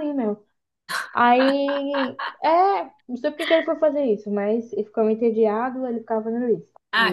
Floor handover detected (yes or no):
yes